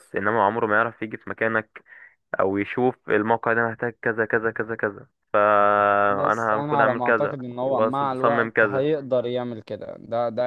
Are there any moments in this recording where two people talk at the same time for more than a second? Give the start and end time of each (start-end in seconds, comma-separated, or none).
6.0-8.8